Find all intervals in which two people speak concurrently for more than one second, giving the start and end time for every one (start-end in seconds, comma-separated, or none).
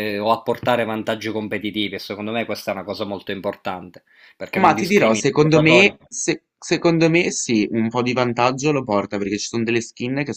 4.5-6.0